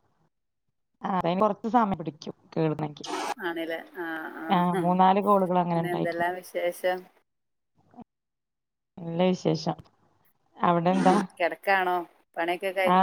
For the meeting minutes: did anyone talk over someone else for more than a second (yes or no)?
yes